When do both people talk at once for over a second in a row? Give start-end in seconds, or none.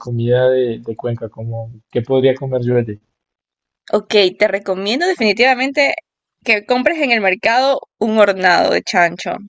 none